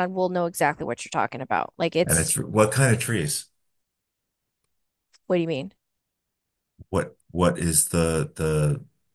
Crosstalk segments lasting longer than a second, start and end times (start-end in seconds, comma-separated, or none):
none